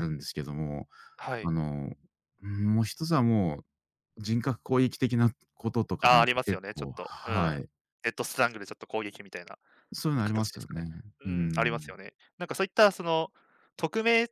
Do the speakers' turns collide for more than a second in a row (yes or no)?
yes